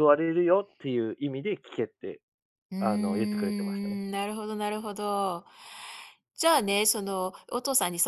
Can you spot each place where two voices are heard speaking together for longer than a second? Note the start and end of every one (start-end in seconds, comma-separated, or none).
2.8-4.0